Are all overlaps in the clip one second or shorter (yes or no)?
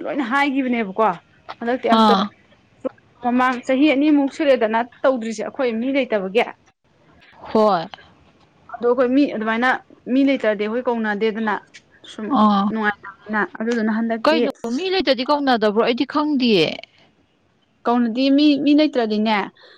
yes